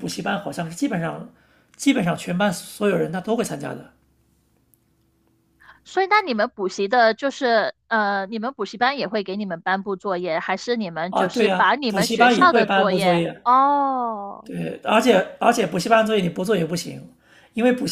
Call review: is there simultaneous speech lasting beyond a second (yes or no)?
yes